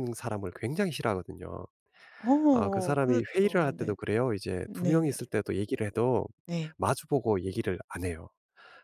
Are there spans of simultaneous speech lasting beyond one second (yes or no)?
yes